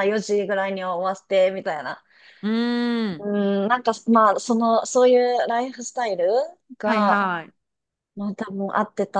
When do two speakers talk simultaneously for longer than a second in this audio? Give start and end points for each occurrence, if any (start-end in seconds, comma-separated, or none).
none